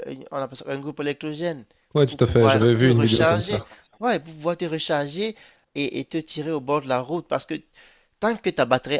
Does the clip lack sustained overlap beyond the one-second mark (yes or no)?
no